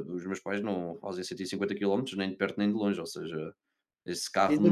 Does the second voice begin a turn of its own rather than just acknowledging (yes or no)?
yes